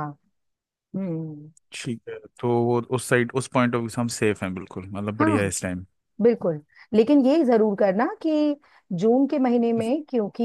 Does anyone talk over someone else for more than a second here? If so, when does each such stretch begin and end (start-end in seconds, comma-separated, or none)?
none